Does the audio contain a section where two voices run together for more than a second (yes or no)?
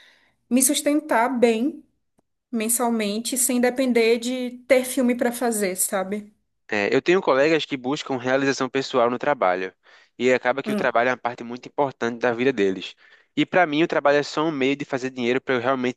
no